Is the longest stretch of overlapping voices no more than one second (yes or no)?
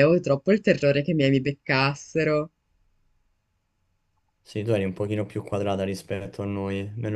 yes